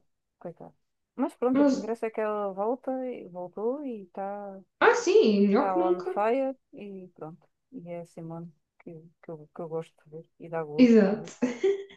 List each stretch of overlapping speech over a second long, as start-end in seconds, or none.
none